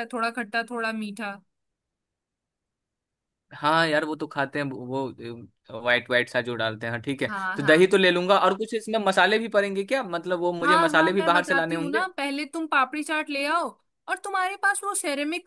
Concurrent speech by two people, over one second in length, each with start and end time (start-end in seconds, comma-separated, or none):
10.6-12.0